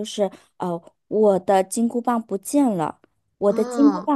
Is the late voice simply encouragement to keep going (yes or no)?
yes